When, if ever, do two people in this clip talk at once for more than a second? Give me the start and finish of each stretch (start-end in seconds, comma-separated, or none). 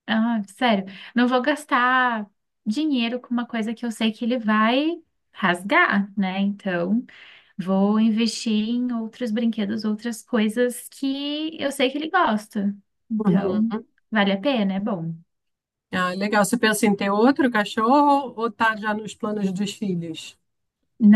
none